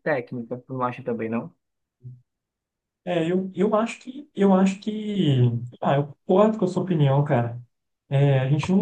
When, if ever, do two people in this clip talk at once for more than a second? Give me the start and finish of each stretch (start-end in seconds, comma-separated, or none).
none